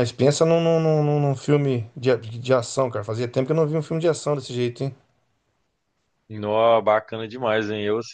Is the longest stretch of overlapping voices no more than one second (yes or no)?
yes